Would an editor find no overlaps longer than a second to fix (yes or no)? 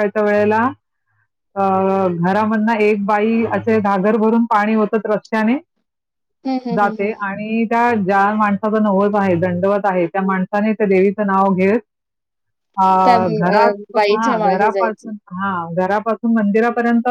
no